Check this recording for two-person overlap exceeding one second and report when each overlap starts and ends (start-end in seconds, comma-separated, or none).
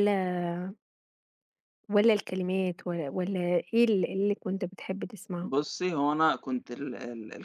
none